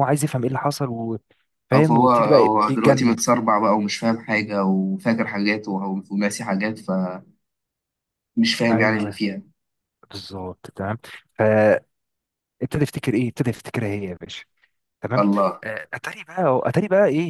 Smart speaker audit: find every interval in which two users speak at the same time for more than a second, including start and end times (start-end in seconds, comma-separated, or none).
1.7-3.2